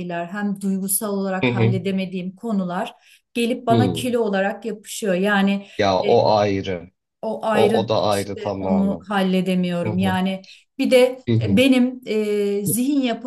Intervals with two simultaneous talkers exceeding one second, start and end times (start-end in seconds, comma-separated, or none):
7.5-9.1